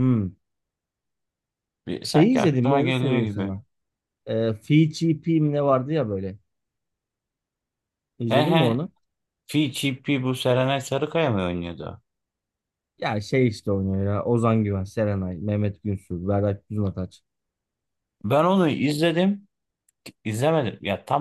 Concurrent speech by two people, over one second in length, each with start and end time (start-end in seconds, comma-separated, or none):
2.0-3.5